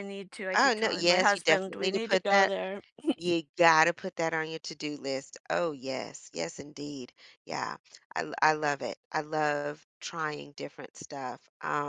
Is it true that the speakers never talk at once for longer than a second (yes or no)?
no